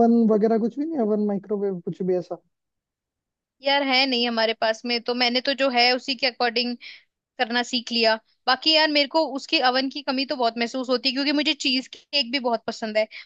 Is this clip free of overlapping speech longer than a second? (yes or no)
yes